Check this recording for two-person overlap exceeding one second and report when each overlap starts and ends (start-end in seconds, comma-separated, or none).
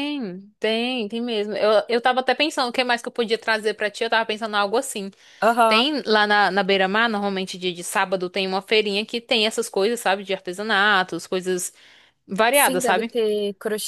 none